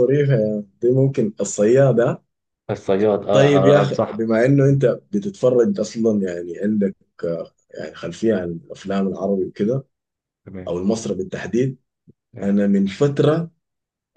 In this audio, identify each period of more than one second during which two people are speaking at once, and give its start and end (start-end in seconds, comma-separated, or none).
3.3-4.5